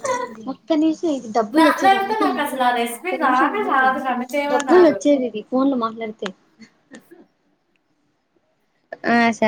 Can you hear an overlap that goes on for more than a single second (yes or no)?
yes